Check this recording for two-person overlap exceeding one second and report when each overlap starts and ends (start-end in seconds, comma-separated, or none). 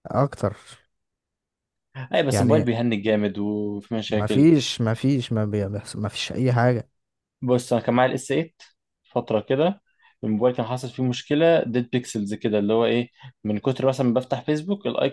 none